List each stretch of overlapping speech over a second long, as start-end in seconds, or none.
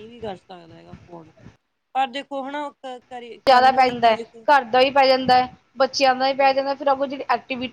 none